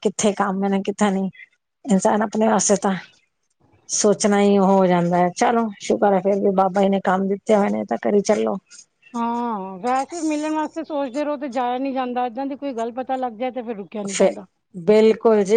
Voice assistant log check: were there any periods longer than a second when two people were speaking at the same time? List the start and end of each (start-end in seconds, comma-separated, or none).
none